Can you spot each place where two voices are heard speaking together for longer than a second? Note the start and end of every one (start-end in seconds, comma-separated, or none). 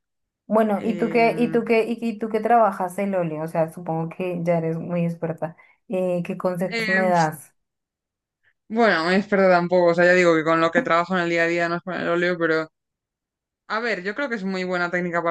none